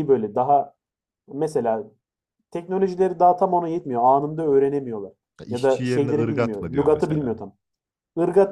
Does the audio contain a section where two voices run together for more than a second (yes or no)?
yes